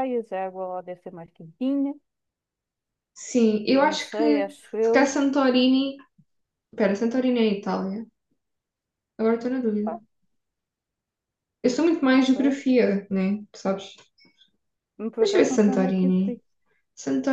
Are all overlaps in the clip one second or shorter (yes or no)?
no